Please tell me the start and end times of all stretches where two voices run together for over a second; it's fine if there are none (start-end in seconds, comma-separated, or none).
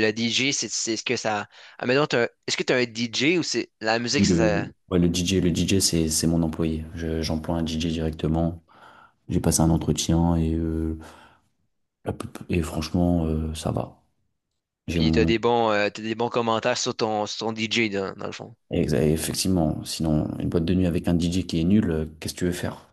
none